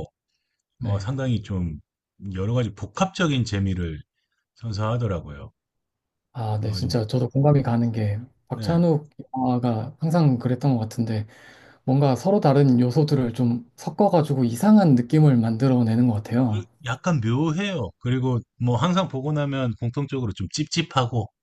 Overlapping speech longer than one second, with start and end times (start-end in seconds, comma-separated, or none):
none